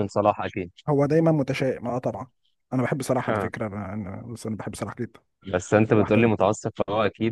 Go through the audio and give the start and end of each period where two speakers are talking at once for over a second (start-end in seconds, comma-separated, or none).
none